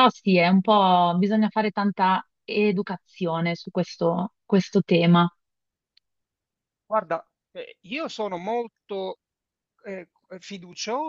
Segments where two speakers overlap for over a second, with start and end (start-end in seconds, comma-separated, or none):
none